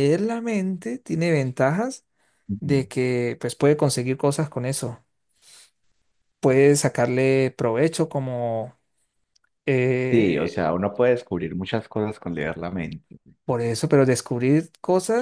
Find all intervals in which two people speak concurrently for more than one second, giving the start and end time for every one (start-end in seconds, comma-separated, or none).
none